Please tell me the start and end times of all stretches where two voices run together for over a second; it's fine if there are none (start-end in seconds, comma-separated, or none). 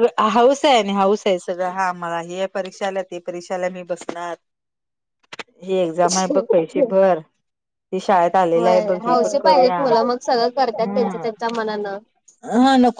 9.1-11.3